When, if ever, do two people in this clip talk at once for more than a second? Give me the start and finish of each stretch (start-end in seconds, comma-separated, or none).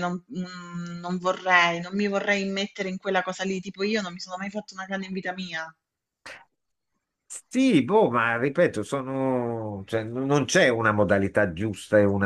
none